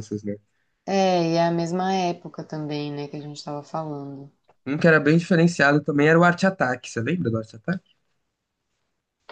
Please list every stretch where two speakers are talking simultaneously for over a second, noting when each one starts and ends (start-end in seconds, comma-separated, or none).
none